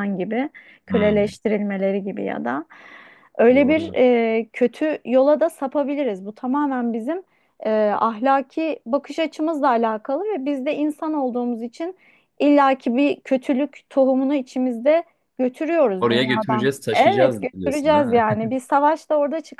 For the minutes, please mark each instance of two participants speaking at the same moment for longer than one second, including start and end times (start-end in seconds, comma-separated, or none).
16.0-18.2